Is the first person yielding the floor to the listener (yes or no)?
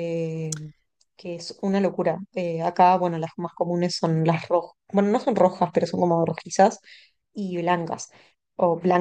yes